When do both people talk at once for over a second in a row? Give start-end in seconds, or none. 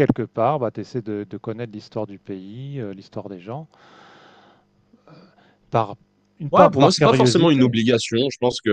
6.5-7.8